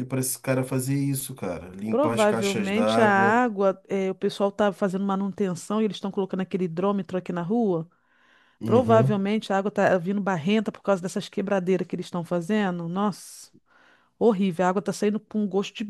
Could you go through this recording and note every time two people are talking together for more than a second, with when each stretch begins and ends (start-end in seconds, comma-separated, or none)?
1.9-3.4